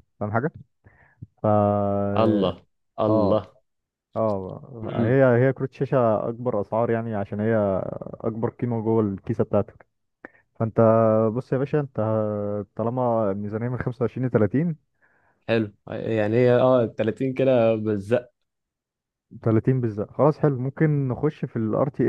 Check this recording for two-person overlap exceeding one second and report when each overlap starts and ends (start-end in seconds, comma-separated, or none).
none